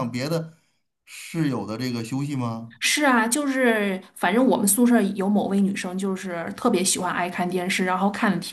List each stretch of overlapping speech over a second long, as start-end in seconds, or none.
none